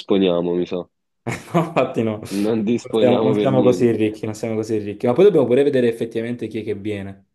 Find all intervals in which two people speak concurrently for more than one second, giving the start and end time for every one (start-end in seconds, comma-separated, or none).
2.4-4.0